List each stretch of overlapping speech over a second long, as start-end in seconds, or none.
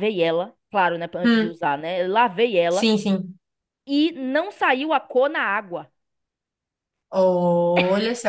none